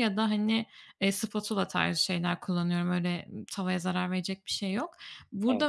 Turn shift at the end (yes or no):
no